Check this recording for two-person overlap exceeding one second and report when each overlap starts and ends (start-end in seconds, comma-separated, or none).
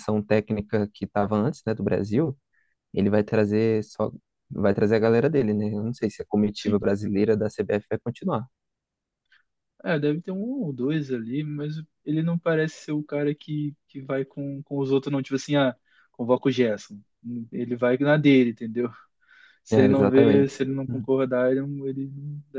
19.7-21.1